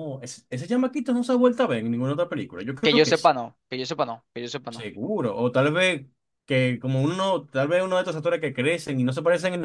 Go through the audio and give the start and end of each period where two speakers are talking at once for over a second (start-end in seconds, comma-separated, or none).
none